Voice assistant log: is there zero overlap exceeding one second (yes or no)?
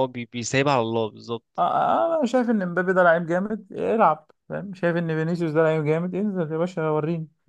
yes